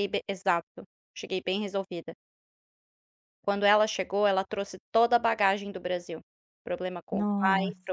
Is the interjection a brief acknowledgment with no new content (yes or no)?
yes